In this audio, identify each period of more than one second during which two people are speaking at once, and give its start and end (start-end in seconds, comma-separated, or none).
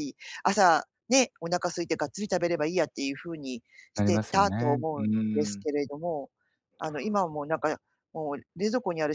3.9-5.7